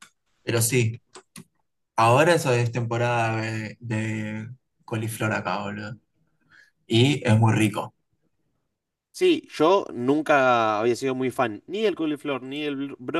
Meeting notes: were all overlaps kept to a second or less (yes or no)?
yes